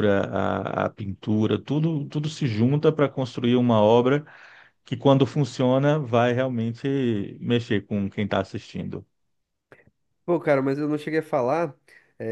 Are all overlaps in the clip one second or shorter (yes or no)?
yes